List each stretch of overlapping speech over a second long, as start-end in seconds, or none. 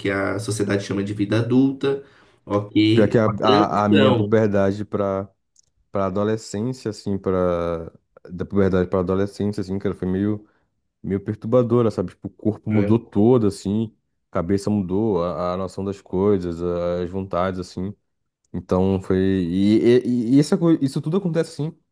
2.9-4.3